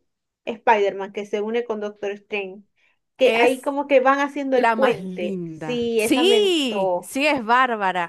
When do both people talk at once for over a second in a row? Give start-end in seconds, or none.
4.5-7.1